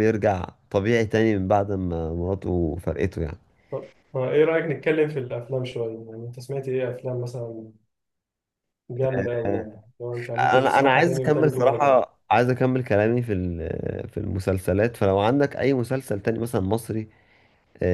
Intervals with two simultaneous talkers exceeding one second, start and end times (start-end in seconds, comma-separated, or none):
10.5-12.0